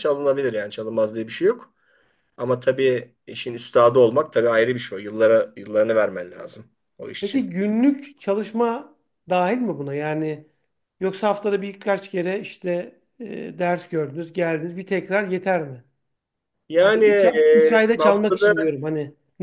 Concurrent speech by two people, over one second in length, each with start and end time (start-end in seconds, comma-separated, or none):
16.8-18.5